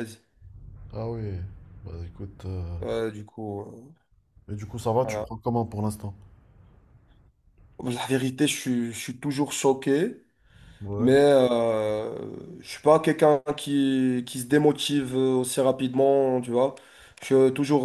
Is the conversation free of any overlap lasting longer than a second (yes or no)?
yes